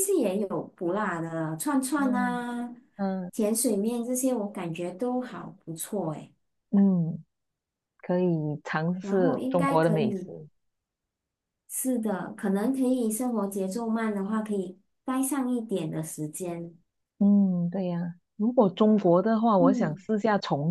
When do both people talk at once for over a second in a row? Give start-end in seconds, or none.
9.0-10.3